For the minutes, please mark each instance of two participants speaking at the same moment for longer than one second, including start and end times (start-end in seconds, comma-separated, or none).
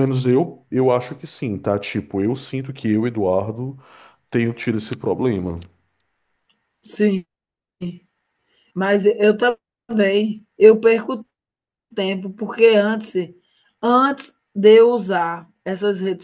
none